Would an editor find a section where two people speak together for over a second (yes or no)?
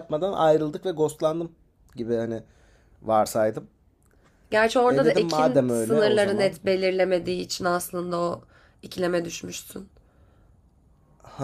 yes